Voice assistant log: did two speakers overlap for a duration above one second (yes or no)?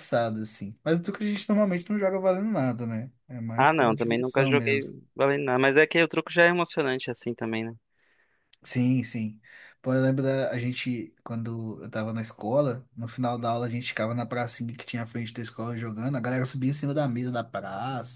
yes